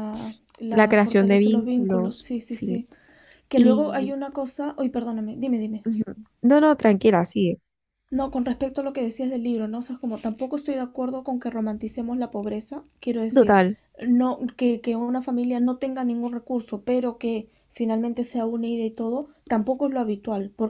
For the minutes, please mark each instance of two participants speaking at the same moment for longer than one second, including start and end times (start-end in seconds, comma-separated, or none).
0.7-2.9